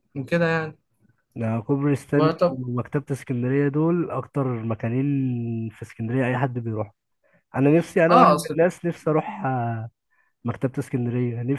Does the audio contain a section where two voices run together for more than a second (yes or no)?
no